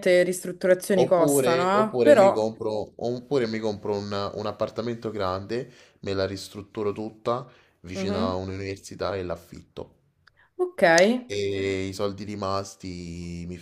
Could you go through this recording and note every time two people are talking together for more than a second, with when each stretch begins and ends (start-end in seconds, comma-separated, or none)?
0.9-2.5